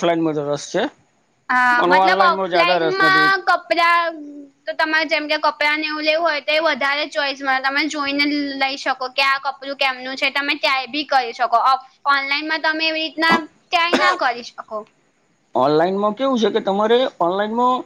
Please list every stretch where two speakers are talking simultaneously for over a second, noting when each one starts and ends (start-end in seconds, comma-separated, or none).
1.8-3.4